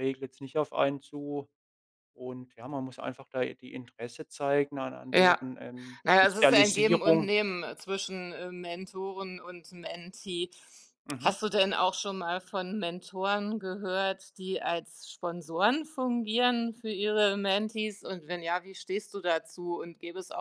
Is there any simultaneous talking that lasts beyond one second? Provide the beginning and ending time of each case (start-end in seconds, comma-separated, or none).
6.0-7.3